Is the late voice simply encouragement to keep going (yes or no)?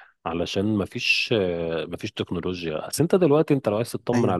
yes